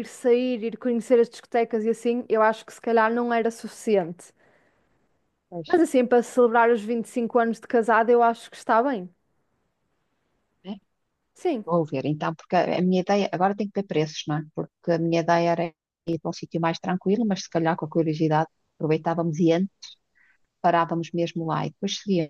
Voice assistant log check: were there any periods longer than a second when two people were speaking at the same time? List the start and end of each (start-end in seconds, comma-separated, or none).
none